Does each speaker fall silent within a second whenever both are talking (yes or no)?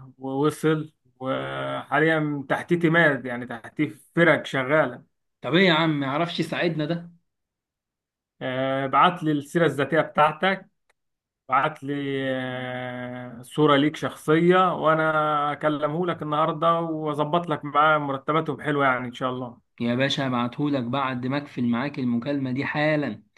yes